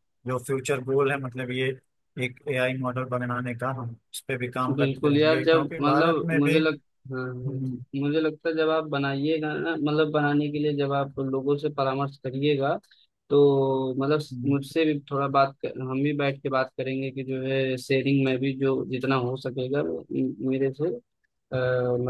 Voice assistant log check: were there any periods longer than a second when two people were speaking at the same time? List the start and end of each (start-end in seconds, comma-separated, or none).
4.8-6.6